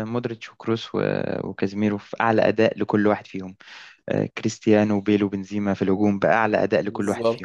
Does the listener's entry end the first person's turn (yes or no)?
yes